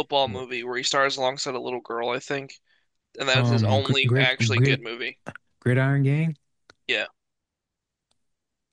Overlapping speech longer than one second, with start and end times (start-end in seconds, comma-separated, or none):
3.3-4.9